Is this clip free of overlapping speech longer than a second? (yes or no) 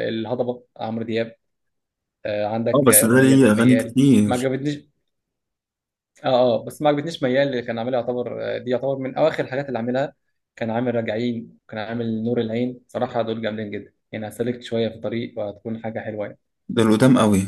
no